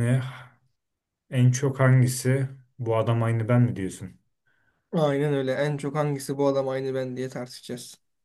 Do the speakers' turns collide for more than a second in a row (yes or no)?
no